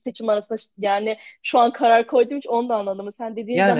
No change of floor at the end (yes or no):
yes